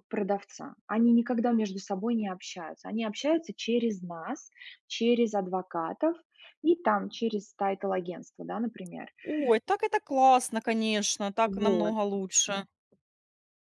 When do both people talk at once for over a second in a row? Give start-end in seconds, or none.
none